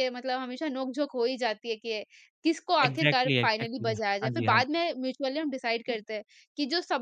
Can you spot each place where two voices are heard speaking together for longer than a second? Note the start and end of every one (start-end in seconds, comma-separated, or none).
2.9-4.8